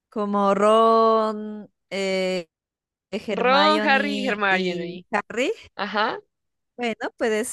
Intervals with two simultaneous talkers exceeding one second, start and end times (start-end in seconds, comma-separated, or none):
3.3-5.0